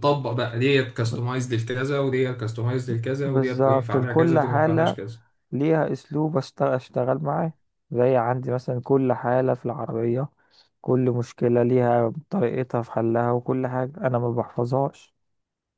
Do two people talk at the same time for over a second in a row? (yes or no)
yes